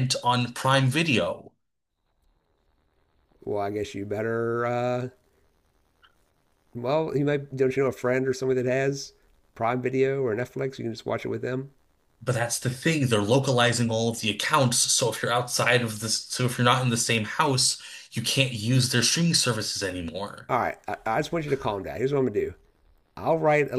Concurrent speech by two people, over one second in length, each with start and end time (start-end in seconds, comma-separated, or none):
none